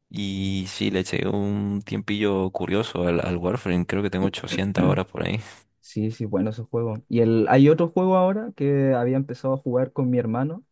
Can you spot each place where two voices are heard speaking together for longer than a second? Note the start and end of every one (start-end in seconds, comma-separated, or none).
none